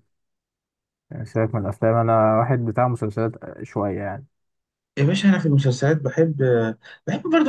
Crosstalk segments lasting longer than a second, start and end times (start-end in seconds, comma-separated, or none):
none